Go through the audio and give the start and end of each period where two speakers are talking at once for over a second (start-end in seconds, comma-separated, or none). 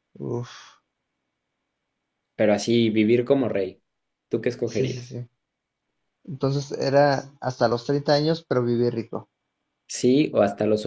none